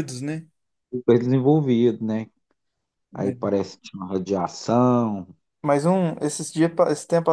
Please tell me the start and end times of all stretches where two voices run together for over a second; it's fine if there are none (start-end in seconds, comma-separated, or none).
none